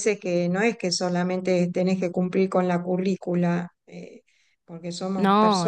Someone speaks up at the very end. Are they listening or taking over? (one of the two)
listening